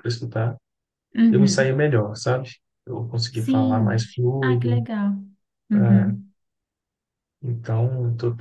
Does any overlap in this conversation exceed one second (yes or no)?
yes